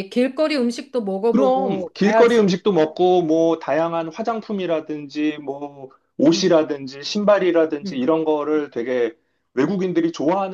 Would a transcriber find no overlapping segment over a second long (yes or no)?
no